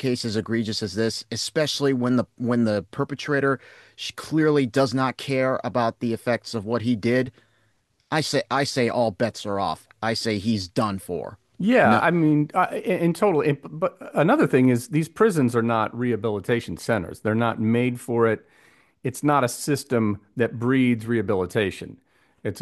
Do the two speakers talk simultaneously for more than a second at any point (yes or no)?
no